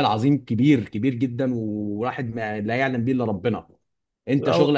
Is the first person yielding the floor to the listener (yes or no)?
no